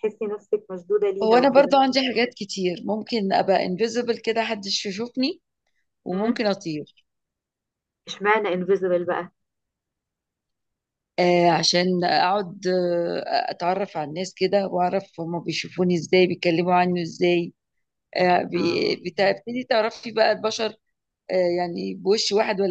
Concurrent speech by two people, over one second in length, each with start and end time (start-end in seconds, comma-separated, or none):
none